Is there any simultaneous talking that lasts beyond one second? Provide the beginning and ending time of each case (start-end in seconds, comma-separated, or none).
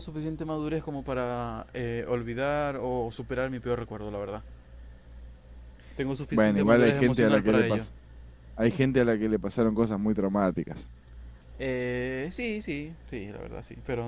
6.3-7.8